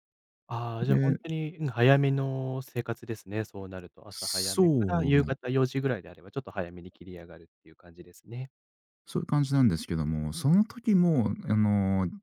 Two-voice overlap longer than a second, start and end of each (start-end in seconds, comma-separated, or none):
4.1-5.3